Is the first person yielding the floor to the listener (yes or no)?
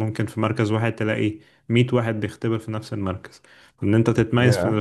no